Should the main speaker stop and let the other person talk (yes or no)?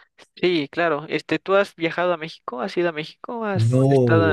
yes